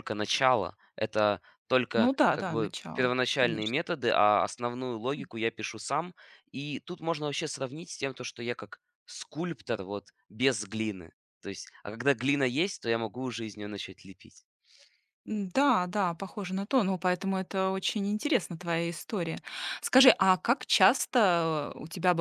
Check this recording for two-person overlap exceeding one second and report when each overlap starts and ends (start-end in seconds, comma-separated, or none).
1.9-3.8